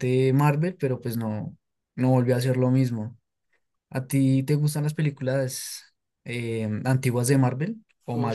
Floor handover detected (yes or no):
yes